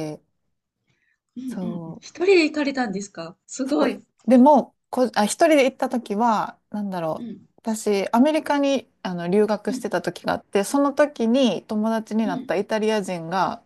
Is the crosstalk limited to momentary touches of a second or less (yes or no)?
yes